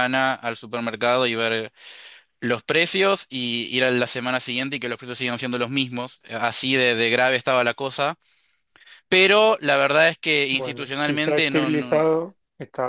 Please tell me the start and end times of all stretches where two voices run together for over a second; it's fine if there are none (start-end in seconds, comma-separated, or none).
10.5-12.1